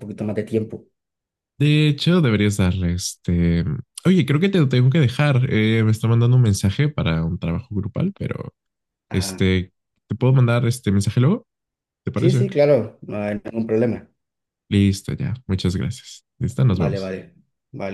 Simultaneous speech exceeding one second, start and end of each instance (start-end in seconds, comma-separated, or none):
none